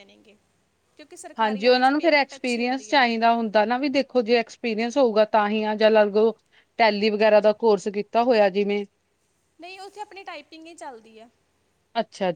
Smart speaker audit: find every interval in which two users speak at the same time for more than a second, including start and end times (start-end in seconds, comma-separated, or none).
1.4-3.0